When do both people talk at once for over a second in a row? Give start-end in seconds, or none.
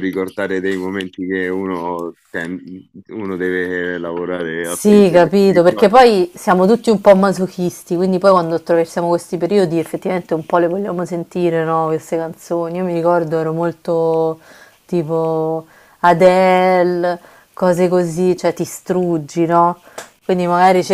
4.6-5.9